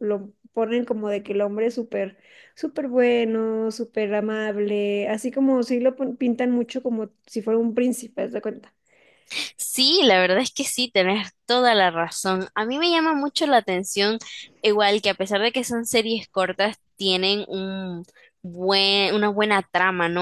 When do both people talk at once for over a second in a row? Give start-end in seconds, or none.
none